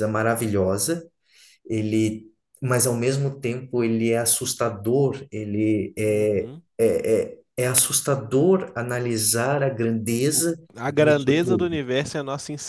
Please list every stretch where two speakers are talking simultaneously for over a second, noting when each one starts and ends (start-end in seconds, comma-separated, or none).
10.3-11.8